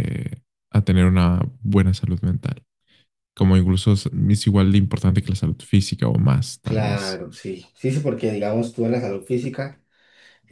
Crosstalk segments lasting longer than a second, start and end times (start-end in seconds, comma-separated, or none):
none